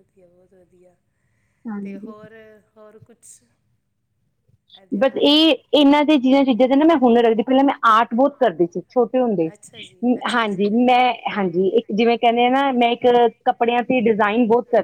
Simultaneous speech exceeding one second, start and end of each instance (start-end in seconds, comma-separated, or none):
none